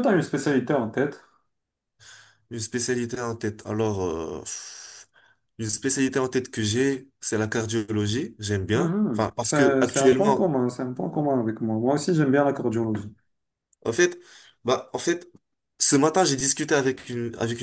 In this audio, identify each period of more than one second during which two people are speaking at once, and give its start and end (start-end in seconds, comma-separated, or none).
8.7-10.4